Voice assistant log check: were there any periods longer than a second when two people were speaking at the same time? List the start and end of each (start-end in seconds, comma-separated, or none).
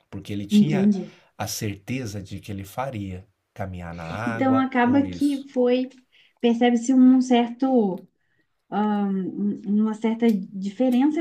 4.2-5.5